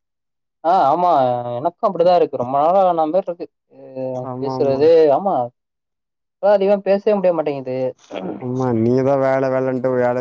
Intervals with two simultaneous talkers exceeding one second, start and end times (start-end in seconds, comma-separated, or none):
none